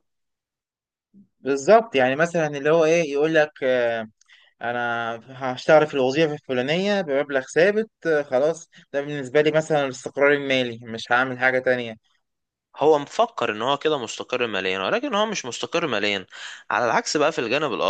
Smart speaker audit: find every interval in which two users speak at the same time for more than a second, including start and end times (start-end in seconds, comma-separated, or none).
none